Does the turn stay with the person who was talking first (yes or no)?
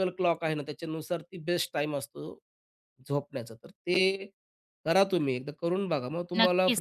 no